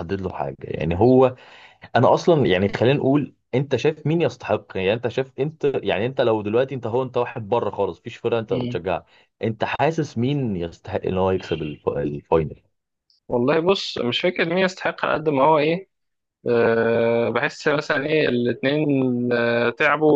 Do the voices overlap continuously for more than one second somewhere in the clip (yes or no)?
no